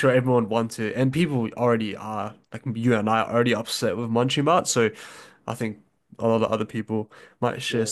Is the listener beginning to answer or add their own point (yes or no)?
yes